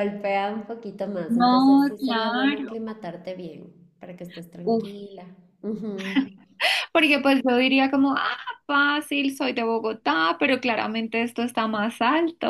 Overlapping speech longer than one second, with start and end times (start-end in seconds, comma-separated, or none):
1.3-2.7